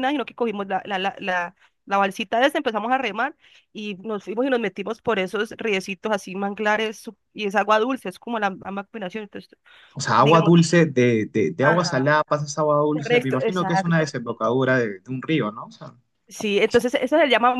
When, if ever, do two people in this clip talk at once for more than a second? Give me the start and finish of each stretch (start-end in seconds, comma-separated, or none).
12.9-14.1